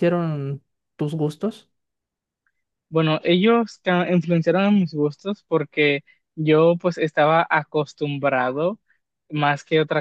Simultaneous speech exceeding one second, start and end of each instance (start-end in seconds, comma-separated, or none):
none